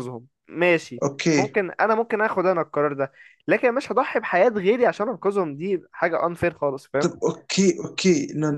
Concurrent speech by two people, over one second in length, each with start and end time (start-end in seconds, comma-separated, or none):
none